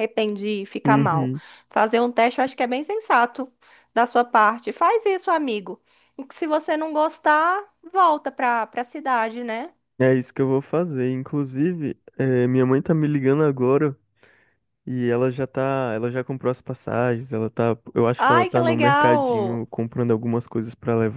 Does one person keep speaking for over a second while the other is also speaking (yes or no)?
yes